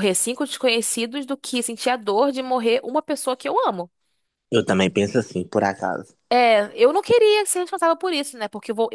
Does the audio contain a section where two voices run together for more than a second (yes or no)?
no